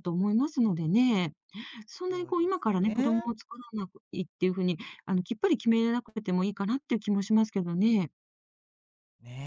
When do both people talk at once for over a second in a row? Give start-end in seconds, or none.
2.1-3.3